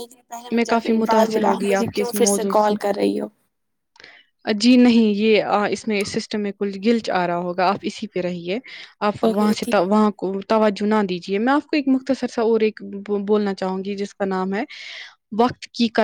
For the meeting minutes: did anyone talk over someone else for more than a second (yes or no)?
yes